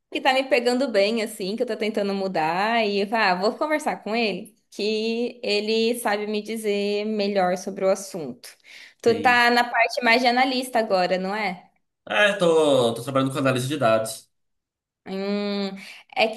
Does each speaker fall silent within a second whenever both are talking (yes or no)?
yes